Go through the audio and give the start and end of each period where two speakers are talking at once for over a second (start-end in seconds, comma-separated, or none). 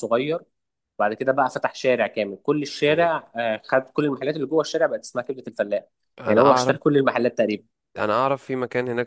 none